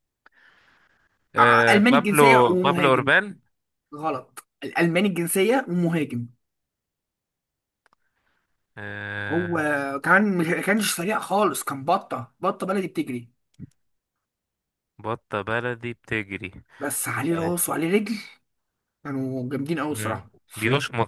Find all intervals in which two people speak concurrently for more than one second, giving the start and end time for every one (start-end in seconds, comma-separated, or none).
1.4-3.1